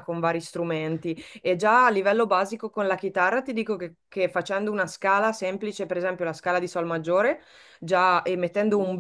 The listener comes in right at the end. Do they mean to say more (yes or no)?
no